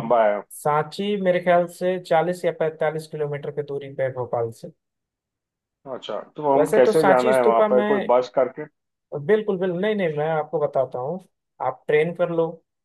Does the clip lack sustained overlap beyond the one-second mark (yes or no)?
no